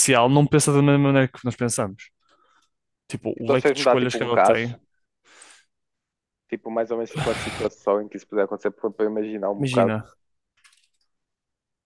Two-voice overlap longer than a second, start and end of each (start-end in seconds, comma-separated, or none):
3.4-4.7